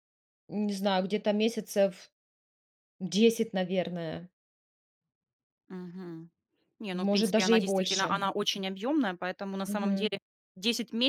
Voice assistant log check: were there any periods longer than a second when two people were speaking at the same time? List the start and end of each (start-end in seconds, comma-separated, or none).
6.9-8.2